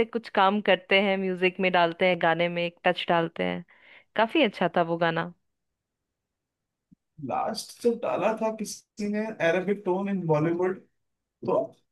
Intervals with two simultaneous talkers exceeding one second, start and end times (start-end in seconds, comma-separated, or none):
none